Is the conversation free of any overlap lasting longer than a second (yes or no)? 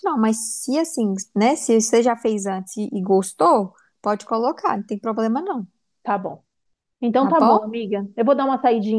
yes